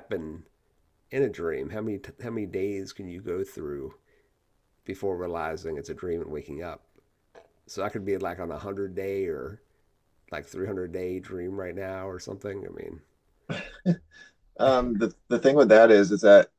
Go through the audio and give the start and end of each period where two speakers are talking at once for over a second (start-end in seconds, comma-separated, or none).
none